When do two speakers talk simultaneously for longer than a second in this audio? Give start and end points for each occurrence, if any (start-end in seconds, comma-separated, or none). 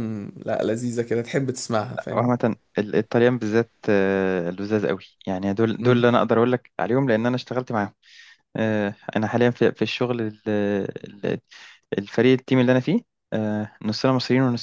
none